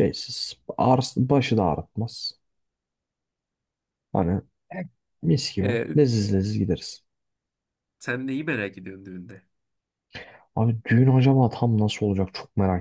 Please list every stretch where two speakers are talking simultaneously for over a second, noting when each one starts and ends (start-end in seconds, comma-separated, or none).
none